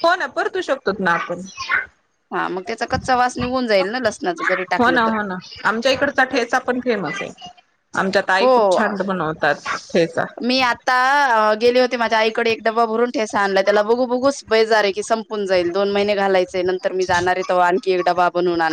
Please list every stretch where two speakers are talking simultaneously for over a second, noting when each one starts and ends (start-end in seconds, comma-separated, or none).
none